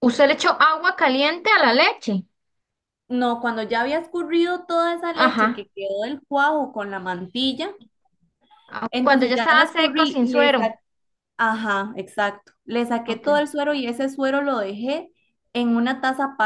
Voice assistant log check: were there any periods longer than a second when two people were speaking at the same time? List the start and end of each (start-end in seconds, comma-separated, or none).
8.9-10.7